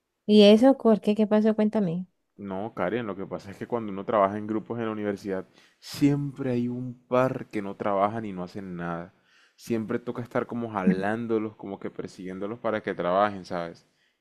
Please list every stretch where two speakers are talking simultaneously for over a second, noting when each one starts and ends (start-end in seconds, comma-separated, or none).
none